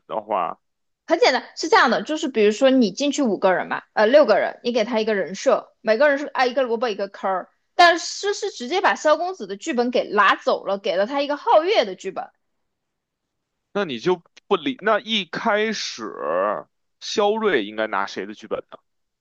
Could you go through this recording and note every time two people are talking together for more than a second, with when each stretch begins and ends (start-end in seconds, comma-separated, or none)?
none